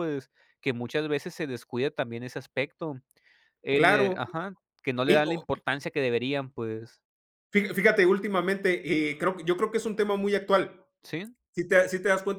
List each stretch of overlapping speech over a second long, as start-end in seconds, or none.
none